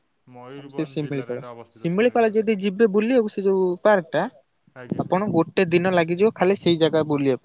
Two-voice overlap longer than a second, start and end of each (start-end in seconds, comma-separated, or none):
0.7-2.4